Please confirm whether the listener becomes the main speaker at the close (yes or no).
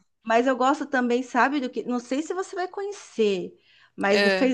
no